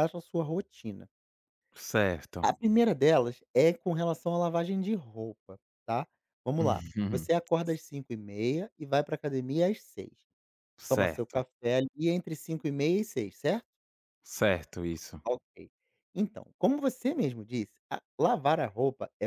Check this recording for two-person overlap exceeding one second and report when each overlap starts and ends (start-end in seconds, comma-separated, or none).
none